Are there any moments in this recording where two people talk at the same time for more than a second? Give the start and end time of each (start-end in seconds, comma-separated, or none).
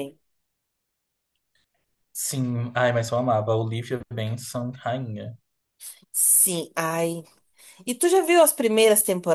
none